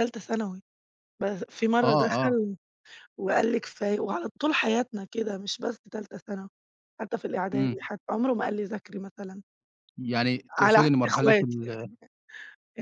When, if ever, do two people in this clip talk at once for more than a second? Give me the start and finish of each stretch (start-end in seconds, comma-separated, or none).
10.6-11.9